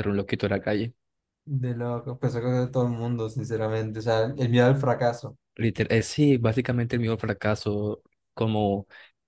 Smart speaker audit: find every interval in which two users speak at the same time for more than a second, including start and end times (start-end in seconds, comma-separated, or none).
none